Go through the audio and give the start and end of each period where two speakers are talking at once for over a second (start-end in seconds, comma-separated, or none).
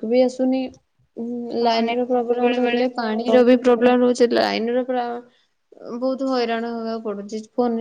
1.6-3.5